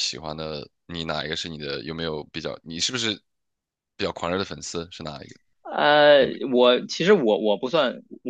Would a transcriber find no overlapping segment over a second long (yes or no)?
yes